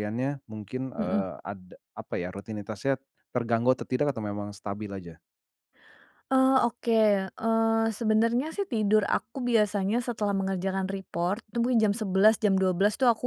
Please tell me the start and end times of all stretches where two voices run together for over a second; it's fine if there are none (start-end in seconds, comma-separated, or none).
none